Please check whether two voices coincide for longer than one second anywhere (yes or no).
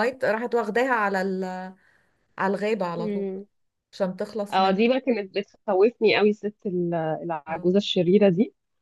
no